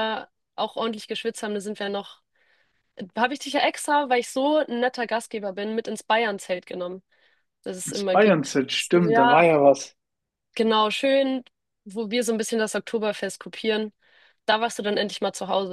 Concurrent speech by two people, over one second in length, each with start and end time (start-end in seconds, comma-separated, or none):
7.8-9.4